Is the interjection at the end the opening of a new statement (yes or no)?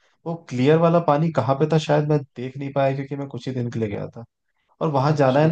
no